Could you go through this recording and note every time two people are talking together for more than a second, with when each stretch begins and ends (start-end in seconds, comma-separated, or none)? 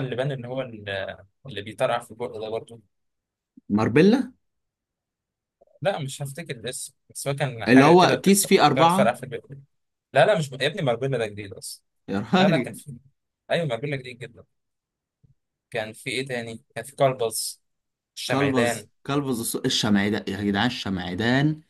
7.7-9.2